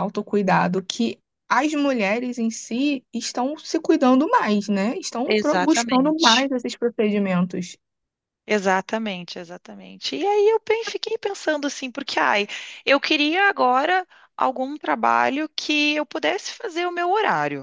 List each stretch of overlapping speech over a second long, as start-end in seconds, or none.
5.3-6.5